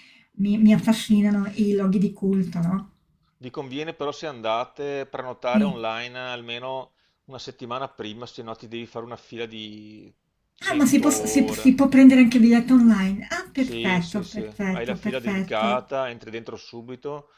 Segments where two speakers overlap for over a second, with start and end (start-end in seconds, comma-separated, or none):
10.6-11.8, 13.5-15.9